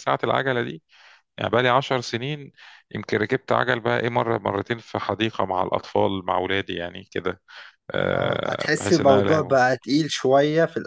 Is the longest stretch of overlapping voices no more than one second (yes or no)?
no